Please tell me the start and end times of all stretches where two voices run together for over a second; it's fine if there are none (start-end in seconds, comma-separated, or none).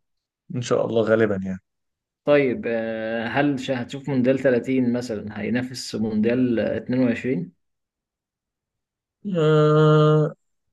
none